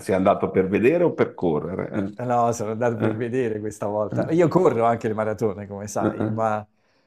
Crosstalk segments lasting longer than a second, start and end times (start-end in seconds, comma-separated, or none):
none